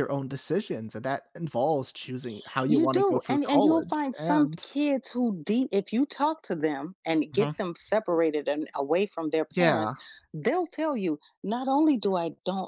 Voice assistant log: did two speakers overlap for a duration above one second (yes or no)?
yes